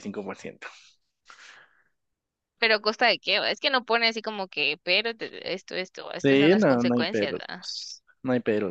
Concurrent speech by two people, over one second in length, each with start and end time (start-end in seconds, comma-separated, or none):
6.2-7.7